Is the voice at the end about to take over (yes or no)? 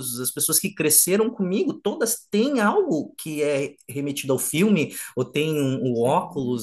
no